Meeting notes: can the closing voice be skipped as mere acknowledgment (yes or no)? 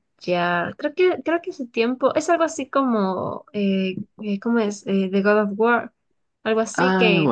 yes